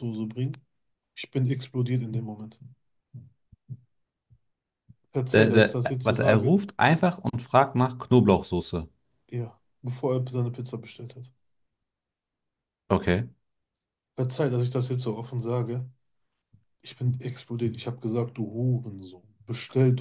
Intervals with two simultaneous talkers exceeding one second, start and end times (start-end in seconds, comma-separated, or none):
5.3-6.5